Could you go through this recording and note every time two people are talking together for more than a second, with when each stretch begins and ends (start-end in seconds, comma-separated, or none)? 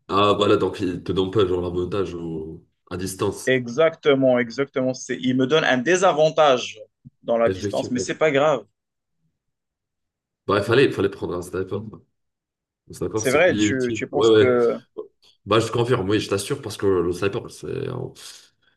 13.2-14.5